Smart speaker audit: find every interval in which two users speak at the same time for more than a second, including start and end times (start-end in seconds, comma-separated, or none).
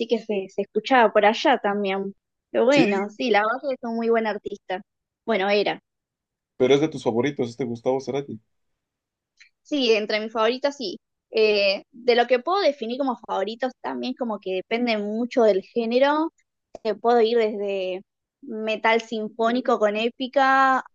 none